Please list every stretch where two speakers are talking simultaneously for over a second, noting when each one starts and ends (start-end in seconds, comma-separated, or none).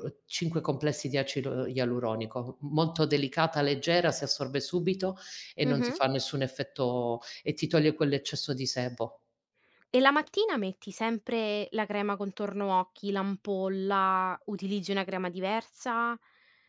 none